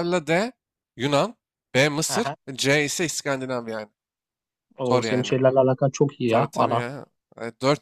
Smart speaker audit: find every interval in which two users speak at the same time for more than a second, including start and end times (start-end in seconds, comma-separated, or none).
none